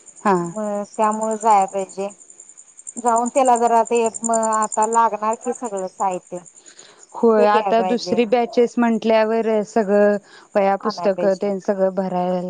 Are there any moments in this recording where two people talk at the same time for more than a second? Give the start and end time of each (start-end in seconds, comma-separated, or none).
7.4-8.8